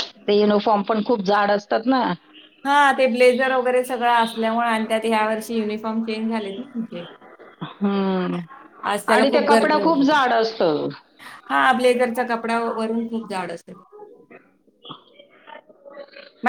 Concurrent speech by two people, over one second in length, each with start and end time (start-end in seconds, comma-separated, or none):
none